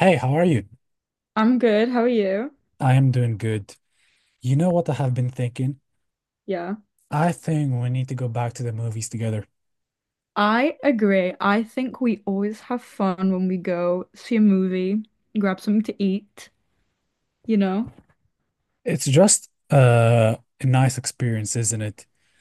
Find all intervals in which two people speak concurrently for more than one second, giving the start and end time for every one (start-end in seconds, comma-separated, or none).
none